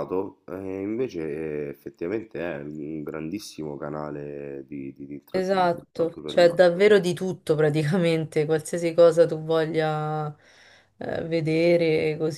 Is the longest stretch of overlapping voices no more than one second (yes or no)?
no